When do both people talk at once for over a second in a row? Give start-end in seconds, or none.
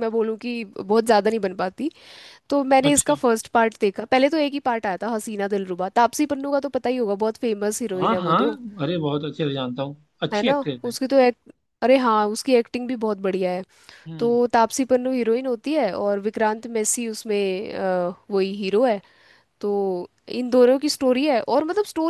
none